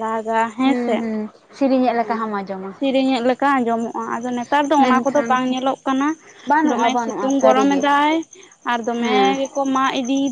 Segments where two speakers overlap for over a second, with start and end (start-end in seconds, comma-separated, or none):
6.6-7.8